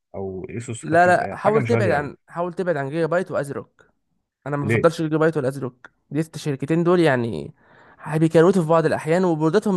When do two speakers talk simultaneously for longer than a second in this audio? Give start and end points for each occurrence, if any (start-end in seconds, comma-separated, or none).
0.8-2.1